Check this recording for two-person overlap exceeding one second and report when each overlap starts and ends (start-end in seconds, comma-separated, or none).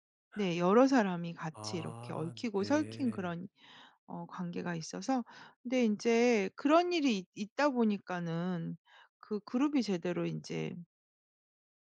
1.5-3.4